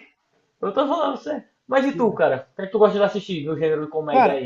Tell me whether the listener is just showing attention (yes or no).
no